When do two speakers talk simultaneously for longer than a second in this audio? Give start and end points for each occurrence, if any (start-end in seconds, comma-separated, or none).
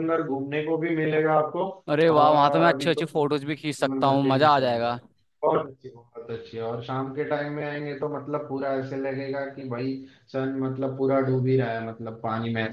2.1-5.0